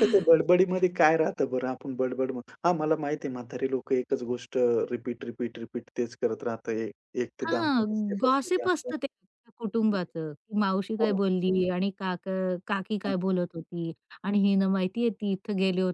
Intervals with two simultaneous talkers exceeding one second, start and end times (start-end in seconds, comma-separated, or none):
7.4-8.9